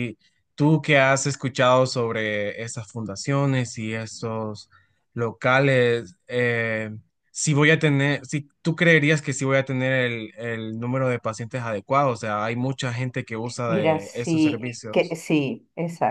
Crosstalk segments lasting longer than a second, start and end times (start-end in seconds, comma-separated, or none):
13.7-14.9